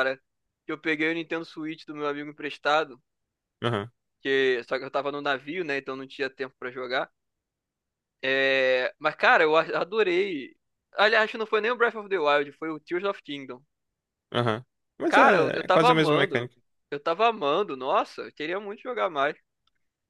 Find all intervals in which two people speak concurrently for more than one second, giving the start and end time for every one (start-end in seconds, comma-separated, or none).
15.1-16.5